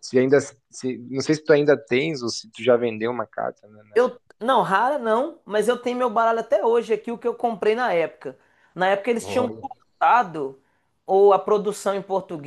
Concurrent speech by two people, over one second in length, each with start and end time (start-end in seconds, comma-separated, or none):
none